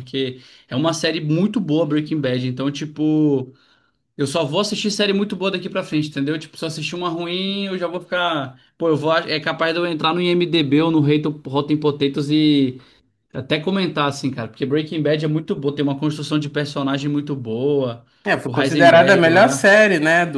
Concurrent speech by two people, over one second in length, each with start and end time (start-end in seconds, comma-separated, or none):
18.4-19.7